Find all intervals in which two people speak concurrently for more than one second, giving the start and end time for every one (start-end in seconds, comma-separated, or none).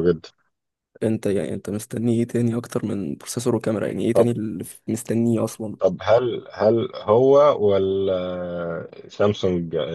none